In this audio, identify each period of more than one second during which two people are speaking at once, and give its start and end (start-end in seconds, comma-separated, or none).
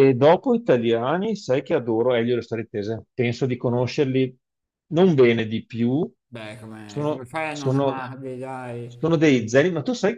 6.8-8.1